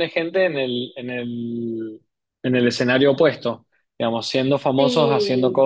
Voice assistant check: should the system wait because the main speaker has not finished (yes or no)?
yes